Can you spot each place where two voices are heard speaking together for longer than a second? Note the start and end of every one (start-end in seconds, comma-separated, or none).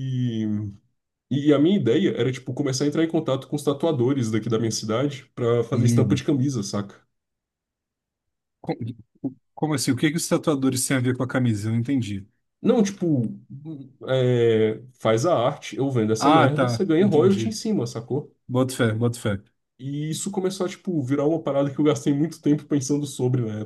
16.2-17.6